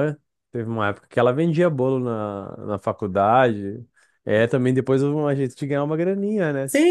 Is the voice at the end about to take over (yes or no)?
yes